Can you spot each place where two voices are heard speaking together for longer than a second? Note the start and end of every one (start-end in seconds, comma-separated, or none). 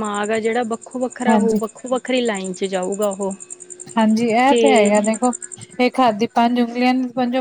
none